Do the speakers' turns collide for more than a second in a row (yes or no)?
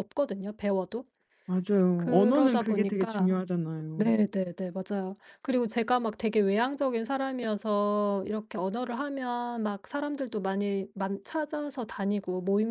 yes